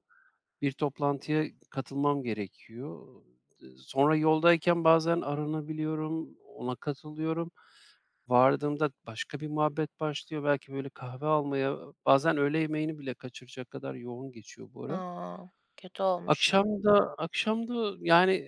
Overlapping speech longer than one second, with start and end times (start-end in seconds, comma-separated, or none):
none